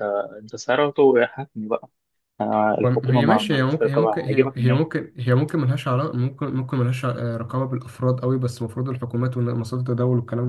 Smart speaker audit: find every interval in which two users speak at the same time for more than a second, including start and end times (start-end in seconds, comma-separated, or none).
2.8-4.8